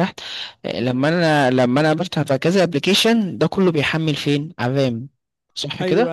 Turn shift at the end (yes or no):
yes